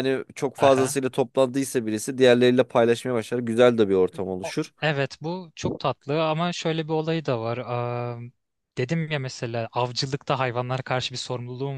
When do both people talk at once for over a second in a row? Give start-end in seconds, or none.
none